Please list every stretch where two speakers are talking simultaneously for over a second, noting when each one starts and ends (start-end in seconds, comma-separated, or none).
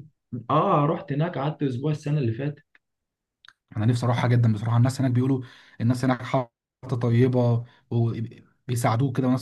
none